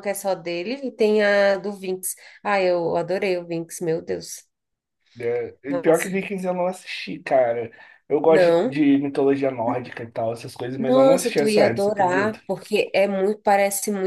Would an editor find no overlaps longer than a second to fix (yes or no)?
no